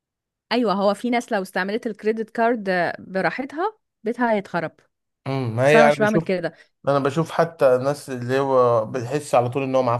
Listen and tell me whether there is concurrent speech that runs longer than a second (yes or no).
no